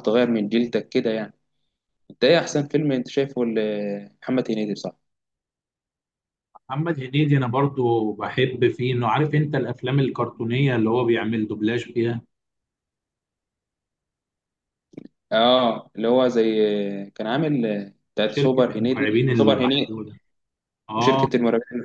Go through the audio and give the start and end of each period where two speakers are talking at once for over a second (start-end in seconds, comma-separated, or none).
18.2-19.9